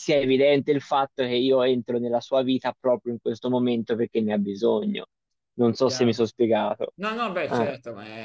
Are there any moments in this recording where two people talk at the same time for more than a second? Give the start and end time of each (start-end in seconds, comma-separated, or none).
none